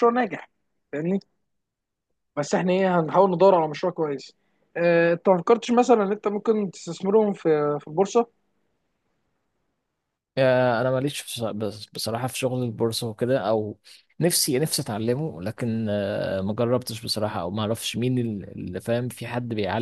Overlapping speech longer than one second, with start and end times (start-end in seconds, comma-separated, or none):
none